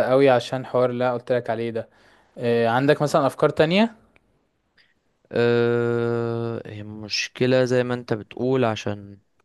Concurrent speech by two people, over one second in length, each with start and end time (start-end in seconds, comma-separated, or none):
none